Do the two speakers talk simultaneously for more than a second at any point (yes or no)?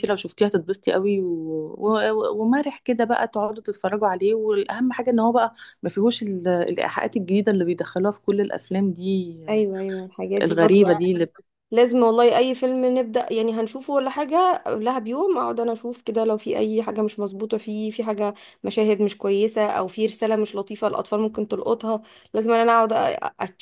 no